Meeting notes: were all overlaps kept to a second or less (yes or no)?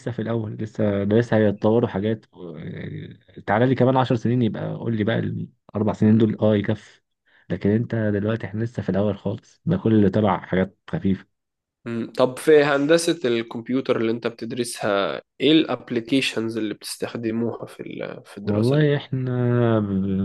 yes